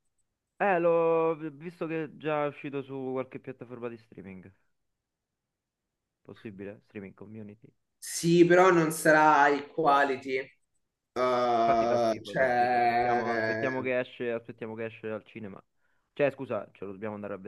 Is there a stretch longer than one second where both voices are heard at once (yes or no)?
yes